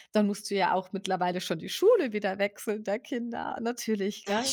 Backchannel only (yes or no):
yes